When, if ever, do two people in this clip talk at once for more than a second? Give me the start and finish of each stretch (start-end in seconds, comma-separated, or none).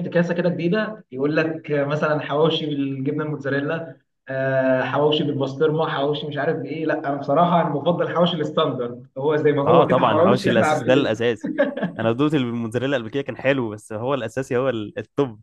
9.7-11.1